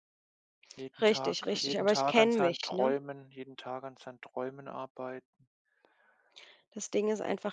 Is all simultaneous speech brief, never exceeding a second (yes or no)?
no